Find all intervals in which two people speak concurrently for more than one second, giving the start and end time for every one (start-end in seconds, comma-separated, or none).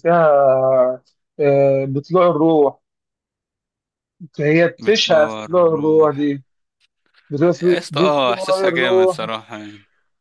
4.8-6.3, 7.5-9.2